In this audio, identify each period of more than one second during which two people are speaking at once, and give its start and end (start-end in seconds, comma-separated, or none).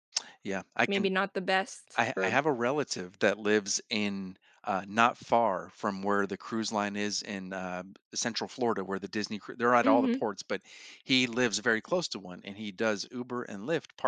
none